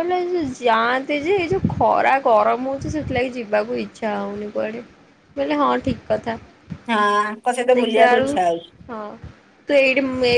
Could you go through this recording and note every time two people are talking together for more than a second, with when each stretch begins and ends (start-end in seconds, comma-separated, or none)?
none